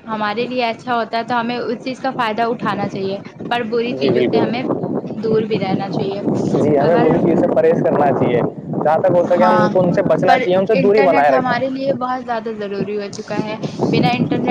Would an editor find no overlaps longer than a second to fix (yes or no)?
yes